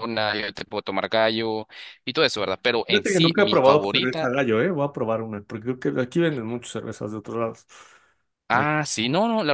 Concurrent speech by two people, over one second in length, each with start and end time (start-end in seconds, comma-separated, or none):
2.9-4.3